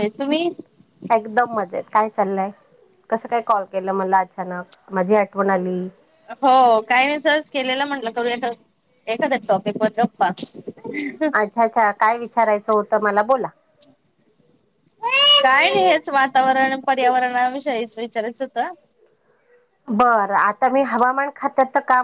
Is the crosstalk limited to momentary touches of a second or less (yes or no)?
yes